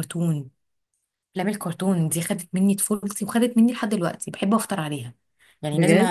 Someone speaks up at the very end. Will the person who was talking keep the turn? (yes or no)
yes